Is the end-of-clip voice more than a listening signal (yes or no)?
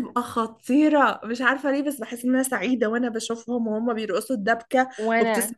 no